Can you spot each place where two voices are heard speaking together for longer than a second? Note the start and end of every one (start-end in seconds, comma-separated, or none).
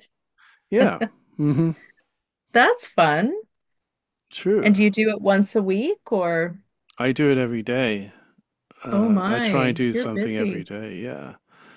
8.9-10.7